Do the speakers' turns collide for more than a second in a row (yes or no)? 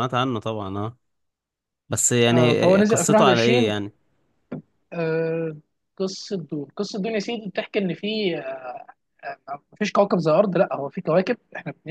yes